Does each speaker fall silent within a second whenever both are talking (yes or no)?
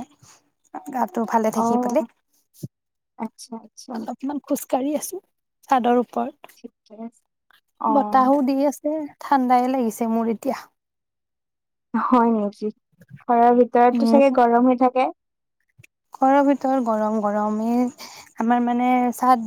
yes